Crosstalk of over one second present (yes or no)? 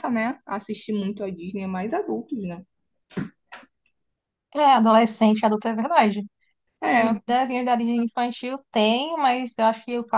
no